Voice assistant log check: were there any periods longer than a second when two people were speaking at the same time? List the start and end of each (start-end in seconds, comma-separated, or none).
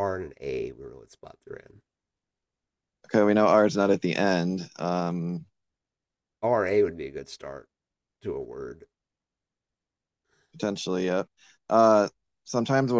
none